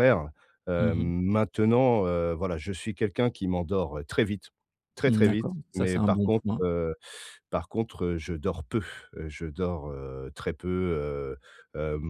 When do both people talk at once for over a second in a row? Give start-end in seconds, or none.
5.1-6.6